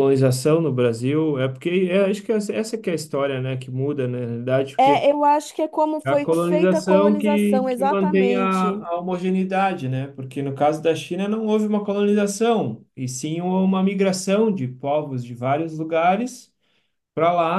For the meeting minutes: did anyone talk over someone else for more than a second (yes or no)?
yes